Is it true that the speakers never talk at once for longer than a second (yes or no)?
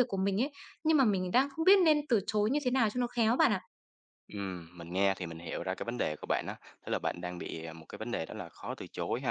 yes